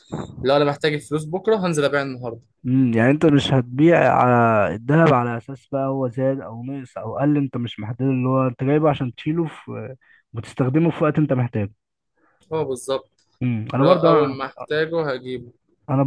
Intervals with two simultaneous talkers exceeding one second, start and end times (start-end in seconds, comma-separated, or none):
none